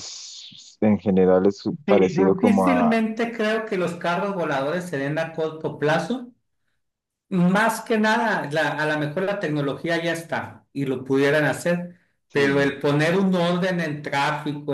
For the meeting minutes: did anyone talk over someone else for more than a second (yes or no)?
yes